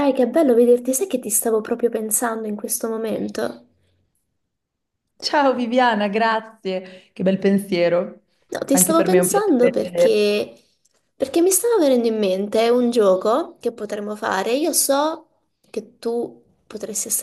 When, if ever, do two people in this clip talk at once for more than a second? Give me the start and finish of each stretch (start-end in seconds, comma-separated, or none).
8.7-10.2